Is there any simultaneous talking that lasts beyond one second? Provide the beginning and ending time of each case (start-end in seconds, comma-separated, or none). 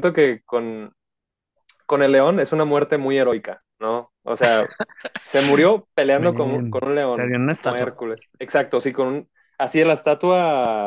6.2-8.0